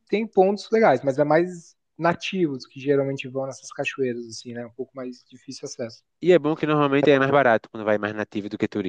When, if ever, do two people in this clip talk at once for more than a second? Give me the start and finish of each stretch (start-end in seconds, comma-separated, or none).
none